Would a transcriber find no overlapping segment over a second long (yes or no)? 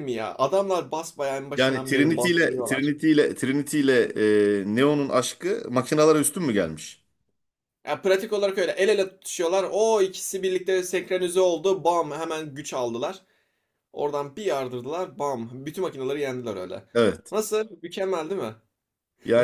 no